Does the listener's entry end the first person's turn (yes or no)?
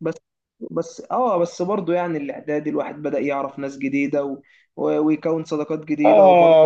yes